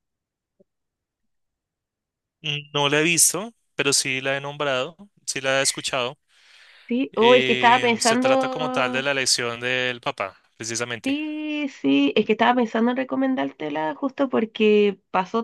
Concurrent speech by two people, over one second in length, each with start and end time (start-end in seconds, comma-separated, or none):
7.1-9.1